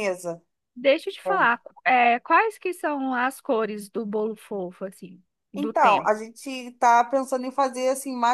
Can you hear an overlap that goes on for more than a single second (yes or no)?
no